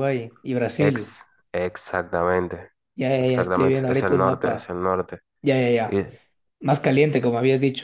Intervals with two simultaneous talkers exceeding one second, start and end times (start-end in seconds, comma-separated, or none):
3.2-4.7